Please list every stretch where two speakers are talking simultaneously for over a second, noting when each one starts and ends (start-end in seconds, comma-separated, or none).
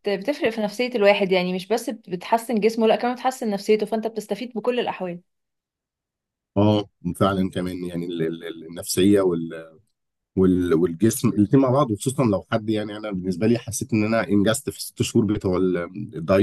none